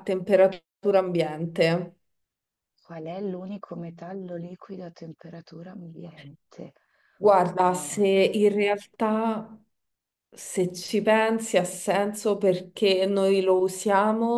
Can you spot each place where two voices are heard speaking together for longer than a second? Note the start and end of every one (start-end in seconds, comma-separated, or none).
none